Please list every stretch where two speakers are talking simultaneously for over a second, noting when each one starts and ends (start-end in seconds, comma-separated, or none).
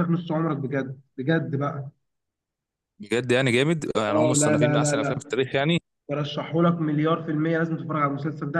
4.1-5.3